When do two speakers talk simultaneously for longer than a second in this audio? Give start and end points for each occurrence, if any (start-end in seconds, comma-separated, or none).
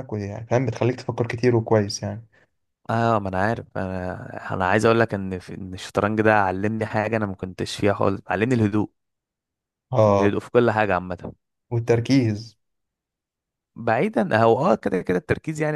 none